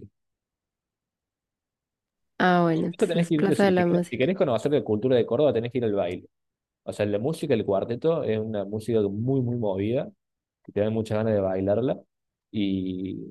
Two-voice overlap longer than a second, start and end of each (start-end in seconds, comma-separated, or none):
2.7-4.4